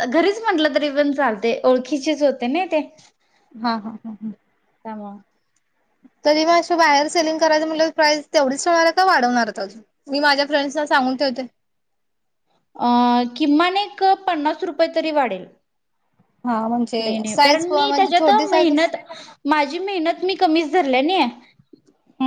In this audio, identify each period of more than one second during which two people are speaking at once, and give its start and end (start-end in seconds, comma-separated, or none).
17.0-18.9